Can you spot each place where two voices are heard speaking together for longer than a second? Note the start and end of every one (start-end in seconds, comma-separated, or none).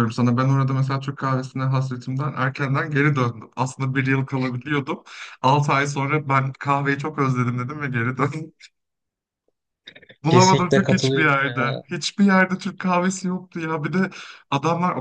10.3-11.8